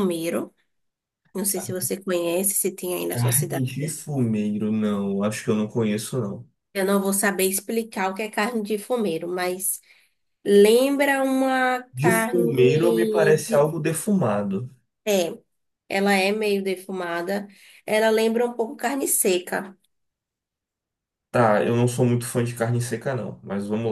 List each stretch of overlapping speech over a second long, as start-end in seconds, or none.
11.9-13.7